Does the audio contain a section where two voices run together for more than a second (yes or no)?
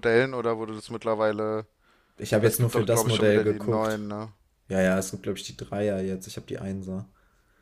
yes